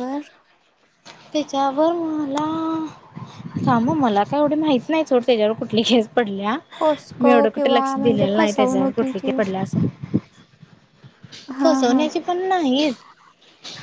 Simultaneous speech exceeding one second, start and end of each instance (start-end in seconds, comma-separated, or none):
7.2-9.3